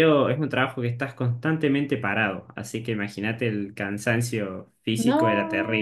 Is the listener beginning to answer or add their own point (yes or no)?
yes